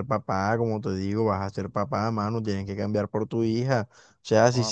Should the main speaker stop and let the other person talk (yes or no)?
no